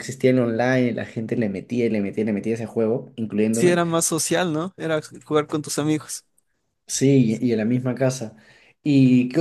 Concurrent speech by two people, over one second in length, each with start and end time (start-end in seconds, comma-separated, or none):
none